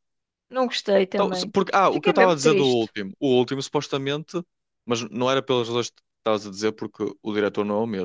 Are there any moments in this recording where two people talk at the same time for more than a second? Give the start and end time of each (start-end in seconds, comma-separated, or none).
1.1-2.9